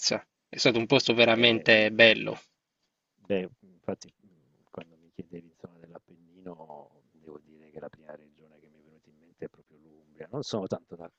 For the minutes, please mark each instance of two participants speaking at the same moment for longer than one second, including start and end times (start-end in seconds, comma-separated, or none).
none